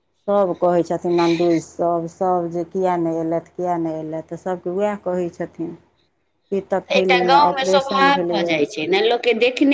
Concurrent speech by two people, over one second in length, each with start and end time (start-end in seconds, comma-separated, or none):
7.0-8.6